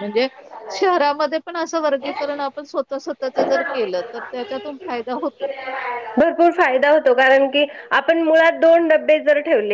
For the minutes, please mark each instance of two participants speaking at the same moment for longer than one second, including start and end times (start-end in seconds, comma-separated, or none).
none